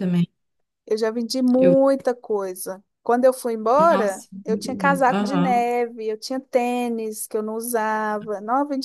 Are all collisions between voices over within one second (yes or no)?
no